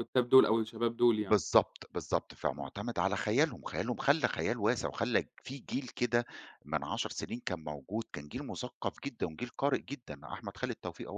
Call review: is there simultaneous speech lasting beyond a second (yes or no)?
no